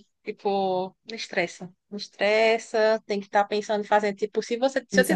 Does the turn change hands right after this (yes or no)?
no